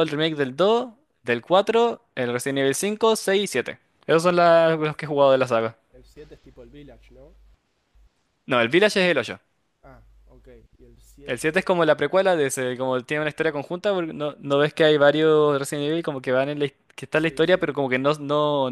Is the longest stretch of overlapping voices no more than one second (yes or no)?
yes